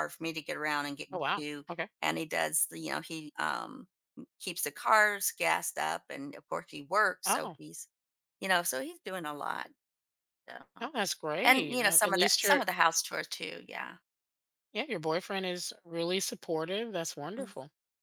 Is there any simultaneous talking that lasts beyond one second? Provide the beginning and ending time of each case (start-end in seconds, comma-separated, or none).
11.4-12.6